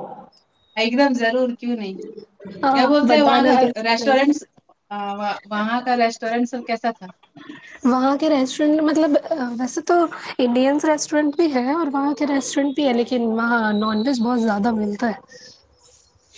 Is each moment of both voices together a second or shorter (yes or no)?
no